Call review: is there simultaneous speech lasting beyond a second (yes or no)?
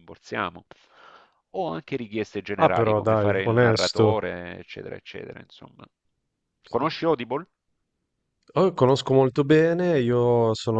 yes